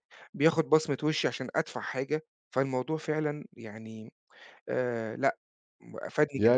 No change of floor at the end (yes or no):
no